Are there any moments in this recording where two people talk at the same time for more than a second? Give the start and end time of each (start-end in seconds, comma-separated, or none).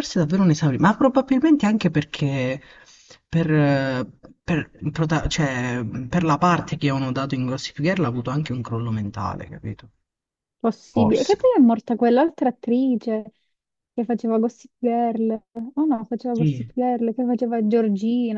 none